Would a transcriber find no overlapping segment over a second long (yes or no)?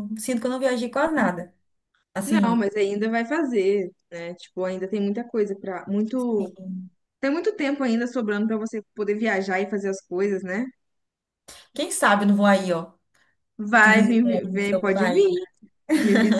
no